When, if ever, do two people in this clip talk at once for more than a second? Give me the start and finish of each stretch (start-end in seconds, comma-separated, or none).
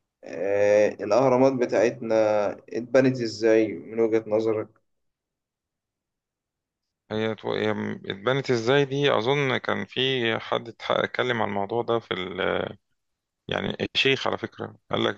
none